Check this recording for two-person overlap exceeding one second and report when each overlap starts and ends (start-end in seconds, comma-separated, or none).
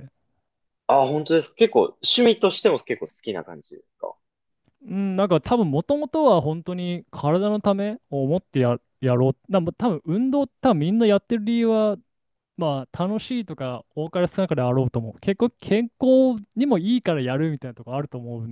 none